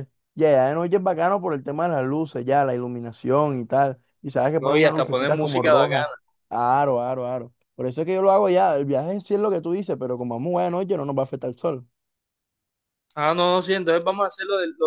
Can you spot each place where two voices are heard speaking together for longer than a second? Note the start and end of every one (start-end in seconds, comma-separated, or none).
4.6-6.1